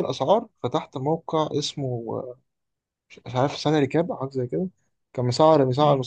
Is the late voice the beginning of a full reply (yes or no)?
no